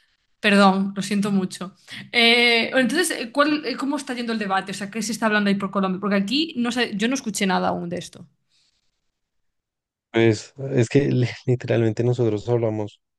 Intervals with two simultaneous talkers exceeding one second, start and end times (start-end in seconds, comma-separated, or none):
none